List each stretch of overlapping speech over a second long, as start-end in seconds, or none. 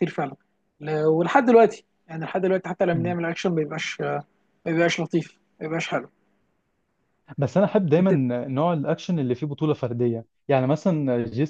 none